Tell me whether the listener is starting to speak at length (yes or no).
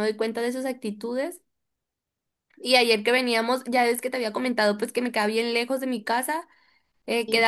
no